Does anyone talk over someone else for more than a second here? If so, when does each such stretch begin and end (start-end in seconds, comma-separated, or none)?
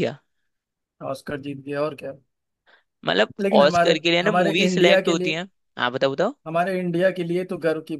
3.4-5.4